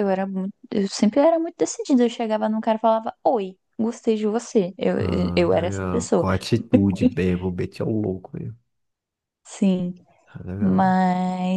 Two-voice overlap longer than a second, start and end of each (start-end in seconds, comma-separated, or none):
5.0-6.2